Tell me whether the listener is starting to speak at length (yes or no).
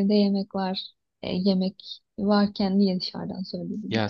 yes